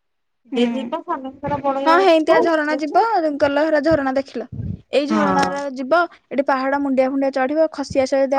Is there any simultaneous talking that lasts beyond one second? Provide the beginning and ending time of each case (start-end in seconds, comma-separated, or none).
0.6-3.0